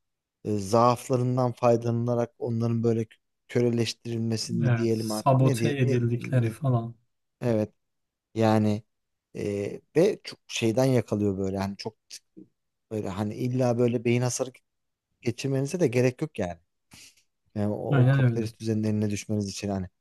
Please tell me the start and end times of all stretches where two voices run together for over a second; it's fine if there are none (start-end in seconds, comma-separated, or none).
4.6-6.6